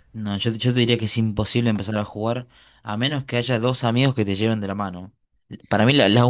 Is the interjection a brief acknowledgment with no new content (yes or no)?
yes